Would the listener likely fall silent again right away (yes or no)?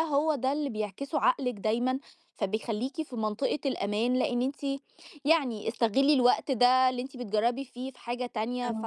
yes